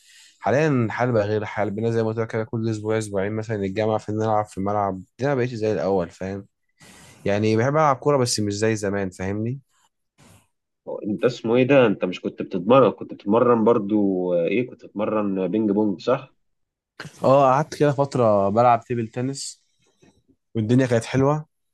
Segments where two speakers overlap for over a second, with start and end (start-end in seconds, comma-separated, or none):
none